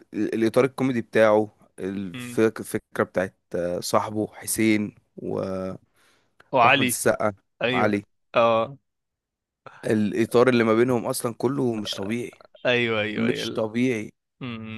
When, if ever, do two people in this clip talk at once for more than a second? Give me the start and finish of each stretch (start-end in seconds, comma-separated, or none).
none